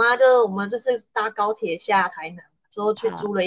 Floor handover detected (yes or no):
no